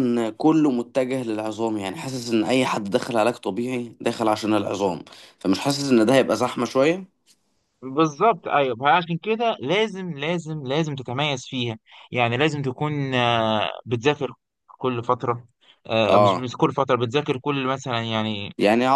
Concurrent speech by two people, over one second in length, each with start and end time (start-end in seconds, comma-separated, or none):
none